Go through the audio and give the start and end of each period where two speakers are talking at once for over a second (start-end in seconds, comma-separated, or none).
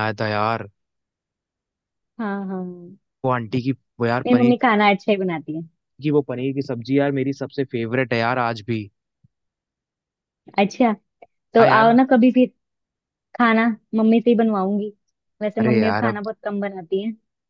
none